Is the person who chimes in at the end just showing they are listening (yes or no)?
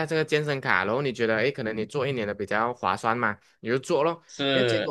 yes